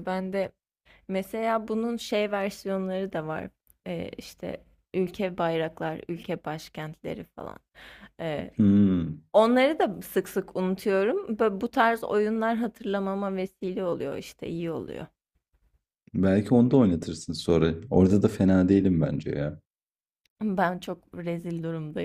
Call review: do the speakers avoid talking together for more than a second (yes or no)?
yes